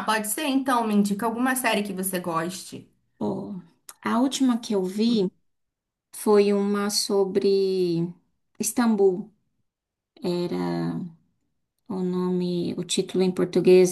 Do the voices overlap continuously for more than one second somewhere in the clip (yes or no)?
no